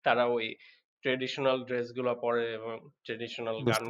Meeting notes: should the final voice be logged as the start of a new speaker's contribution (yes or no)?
no